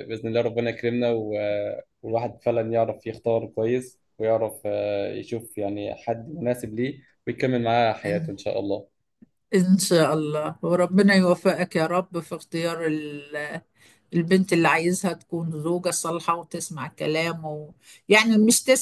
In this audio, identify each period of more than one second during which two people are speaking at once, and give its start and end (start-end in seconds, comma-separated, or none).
none